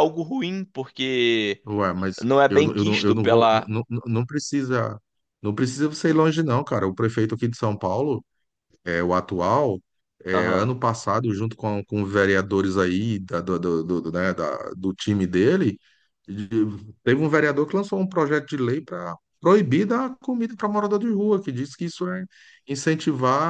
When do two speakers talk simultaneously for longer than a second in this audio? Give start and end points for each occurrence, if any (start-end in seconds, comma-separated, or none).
2.2-3.7